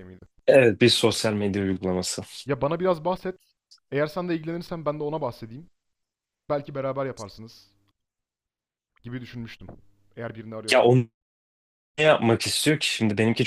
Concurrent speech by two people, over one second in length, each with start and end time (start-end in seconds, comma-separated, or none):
none